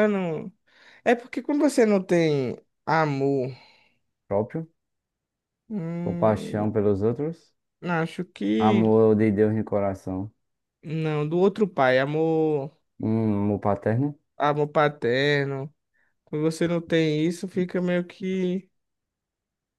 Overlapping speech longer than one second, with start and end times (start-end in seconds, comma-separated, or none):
none